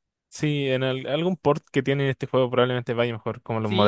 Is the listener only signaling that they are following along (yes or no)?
no